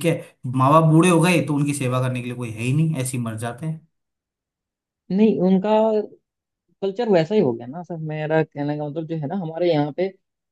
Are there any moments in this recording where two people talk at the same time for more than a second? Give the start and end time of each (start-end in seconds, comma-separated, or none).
none